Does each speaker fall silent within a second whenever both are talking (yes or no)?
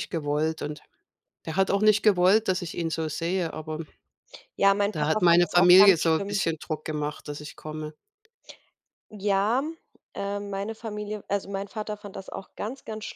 no